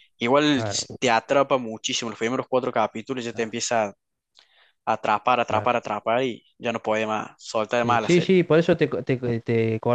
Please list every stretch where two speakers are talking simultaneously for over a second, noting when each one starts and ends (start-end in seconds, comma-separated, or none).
none